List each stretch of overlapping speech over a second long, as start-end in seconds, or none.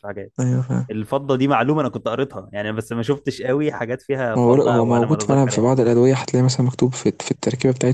4.4-5.7